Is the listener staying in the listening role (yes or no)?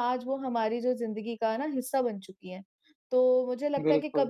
yes